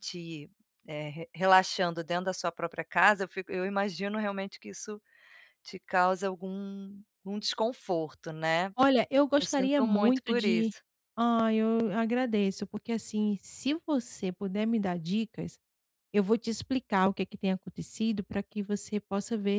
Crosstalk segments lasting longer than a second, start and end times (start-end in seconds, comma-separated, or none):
9.4-10.7